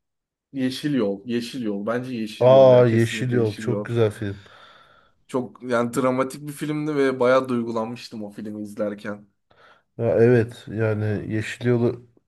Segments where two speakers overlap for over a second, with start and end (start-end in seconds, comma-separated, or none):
2.4-3.9